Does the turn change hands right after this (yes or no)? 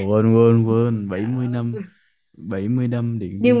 yes